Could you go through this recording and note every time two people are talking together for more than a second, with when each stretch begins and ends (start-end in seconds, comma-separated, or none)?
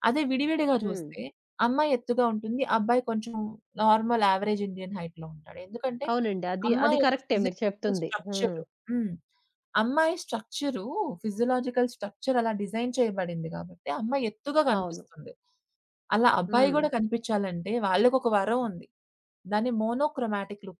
6.7-8.6